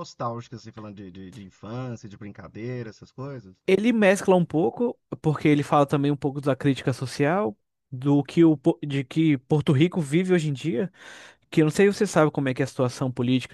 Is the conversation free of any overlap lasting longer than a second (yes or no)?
yes